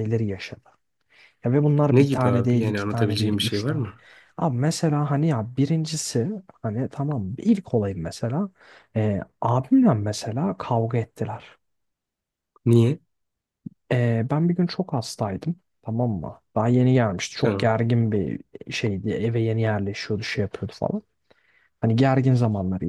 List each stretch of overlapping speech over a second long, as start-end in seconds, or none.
1.9-3.9